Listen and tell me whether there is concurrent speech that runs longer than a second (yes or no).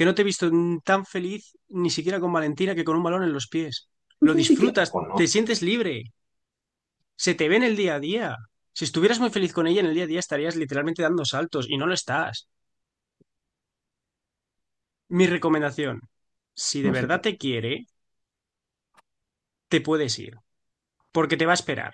yes